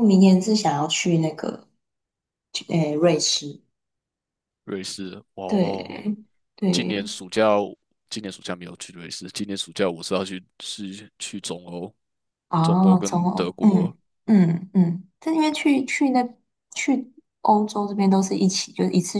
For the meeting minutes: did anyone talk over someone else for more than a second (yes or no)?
yes